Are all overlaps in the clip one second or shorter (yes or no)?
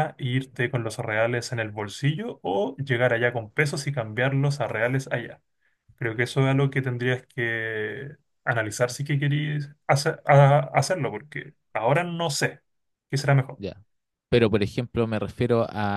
yes